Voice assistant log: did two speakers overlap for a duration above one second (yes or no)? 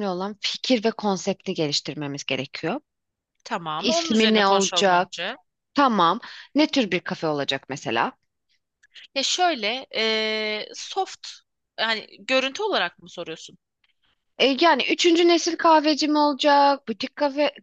yes